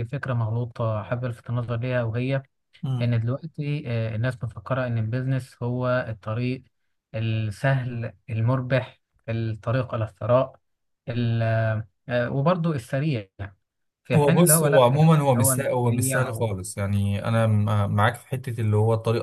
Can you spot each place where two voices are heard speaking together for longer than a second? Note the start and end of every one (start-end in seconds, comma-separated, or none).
14.1-16.5